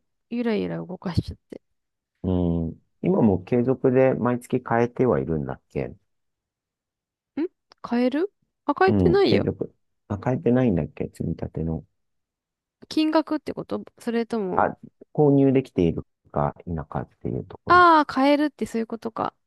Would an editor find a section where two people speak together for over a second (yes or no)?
no